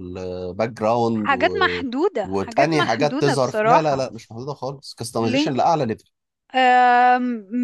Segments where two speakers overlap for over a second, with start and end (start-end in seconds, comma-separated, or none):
2.2-4.0